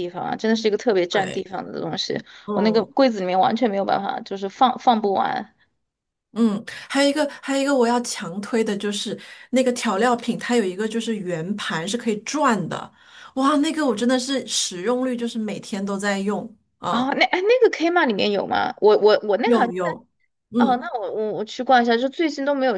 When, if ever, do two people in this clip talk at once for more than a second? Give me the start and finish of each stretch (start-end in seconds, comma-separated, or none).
none